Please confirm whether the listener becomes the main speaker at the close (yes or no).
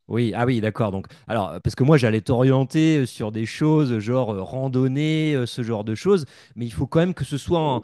no